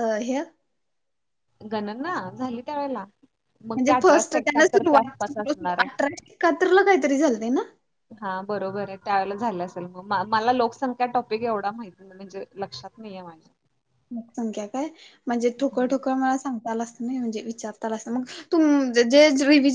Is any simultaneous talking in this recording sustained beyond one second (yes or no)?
yes